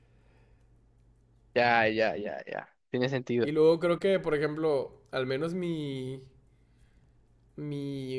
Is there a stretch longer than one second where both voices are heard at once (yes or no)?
no